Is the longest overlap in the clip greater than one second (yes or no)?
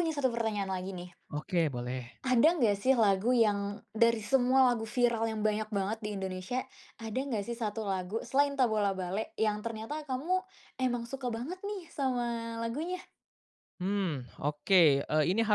no